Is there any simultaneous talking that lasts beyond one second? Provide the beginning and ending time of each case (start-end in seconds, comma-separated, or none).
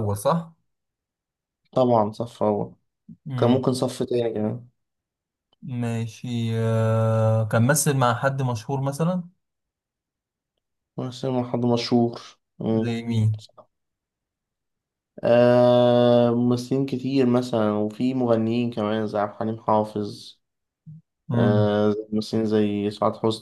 none